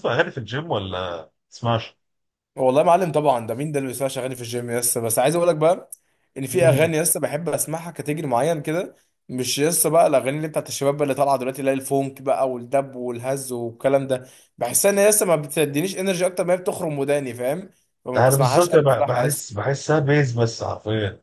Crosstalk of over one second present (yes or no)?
yes